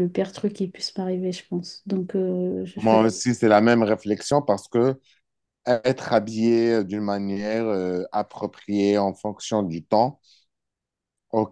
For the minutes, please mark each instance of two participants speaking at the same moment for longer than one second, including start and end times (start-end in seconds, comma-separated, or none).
none